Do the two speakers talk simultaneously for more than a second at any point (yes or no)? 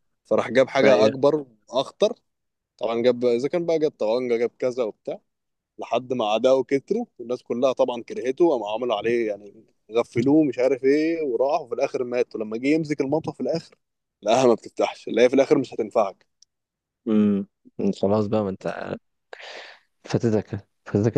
no